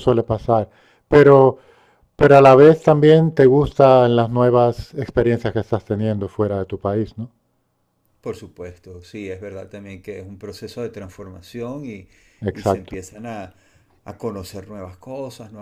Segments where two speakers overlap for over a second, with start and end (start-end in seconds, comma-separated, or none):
none